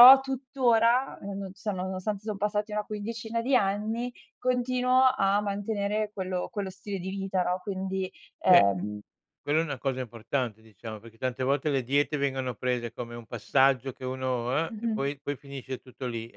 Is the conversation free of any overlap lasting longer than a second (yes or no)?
yes